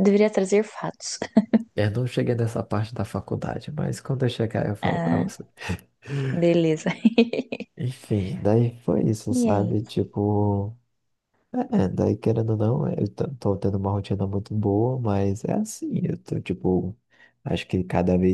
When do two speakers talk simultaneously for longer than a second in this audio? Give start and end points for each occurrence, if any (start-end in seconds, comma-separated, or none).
none